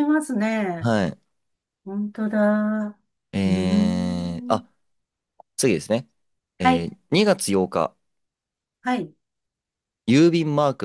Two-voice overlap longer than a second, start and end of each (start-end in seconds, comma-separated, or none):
3.4-4.6